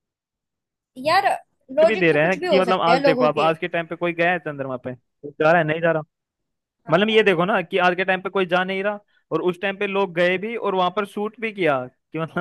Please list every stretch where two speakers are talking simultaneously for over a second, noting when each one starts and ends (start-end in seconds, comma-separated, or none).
1.9-3.5